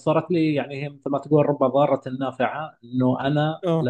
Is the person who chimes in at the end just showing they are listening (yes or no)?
yes